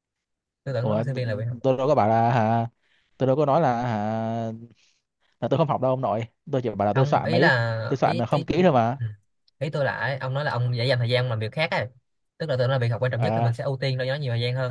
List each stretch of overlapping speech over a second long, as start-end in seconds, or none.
6.9-8.7